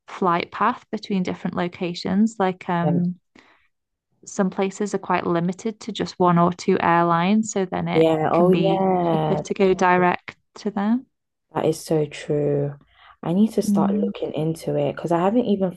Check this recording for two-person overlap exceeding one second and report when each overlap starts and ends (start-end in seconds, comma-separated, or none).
7.9-9.4